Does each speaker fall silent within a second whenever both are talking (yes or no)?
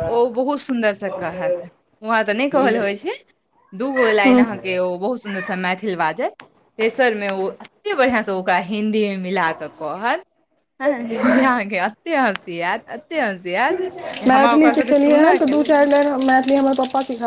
no